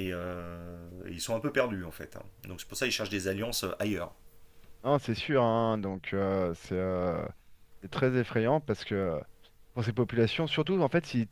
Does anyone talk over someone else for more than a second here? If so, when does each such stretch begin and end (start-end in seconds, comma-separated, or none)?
none